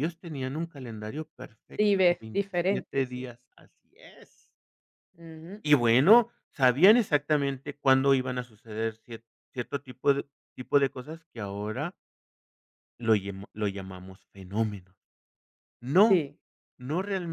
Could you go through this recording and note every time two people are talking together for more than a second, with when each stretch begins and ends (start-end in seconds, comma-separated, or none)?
1.8-3.3